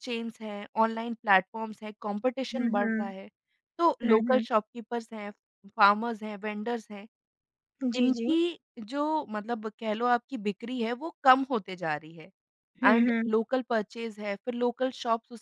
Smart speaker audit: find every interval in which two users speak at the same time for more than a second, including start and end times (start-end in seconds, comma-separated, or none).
none